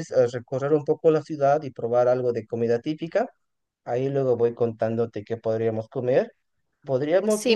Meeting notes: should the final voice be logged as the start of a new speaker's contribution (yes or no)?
yes